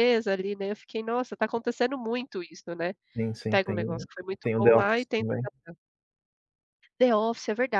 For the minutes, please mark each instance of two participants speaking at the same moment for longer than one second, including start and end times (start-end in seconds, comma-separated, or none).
3.5-5.3